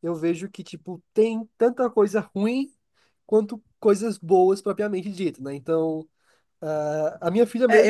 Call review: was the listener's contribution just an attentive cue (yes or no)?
no